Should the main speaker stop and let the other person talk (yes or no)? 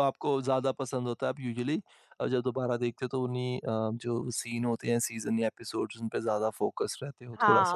yes